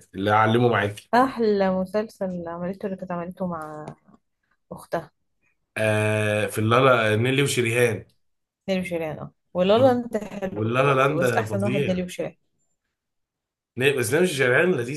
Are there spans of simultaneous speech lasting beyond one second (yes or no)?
yes